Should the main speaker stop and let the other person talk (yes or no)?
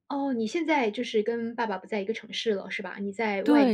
yes